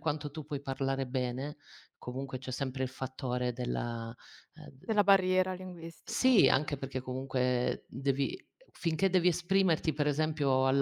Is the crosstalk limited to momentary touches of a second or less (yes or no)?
yes